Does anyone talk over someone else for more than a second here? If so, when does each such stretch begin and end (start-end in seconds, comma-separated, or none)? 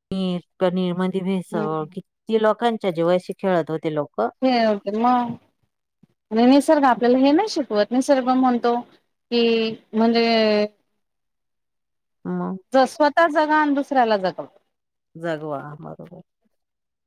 none